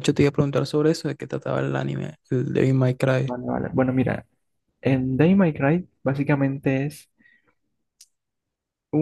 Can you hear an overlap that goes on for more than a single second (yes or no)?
no